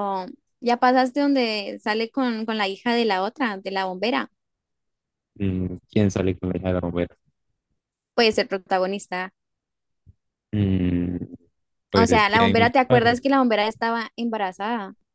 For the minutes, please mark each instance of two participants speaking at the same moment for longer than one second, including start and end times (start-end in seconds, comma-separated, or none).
11.9-13.2